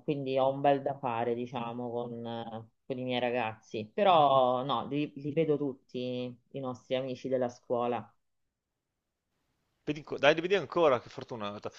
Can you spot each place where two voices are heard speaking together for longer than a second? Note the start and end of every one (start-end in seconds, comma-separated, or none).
none